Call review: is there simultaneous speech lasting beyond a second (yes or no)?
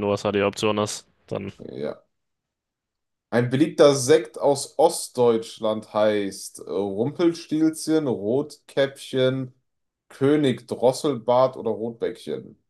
no